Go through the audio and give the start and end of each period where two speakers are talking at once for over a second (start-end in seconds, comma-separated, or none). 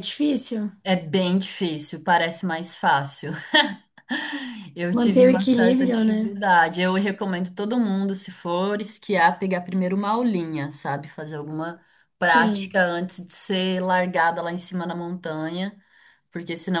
4.9-6.3